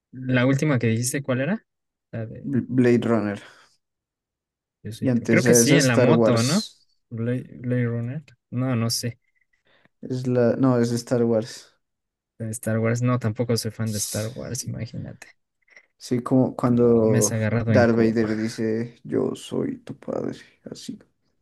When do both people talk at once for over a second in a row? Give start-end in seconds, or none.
5.0-6.7, 16.7-18.3